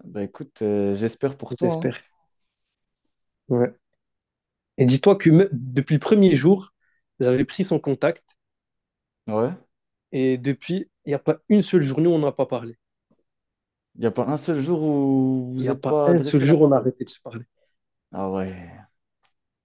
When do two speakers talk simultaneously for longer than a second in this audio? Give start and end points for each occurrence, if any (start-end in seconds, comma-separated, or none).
15.6-16.9